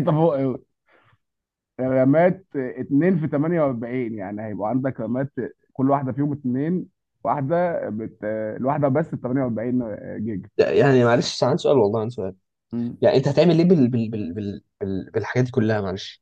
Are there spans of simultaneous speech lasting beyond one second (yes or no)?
no